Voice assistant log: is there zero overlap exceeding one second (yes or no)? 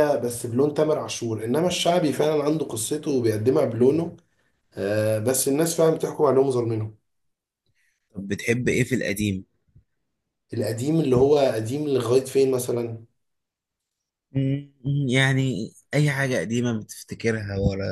yes